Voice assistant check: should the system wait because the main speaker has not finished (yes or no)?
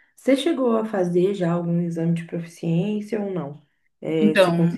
no